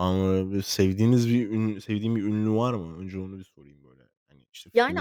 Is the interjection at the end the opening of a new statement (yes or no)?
yes